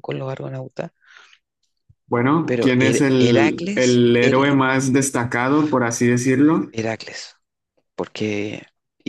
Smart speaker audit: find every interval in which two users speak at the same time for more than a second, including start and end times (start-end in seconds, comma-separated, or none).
2.5-4.5